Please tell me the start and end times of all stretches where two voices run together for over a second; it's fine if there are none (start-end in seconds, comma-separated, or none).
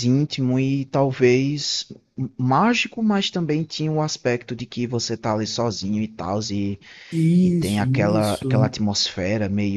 7.4-8.7